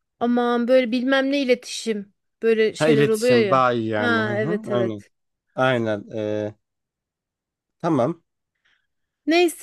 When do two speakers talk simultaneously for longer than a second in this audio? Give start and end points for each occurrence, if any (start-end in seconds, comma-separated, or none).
2.8-5.0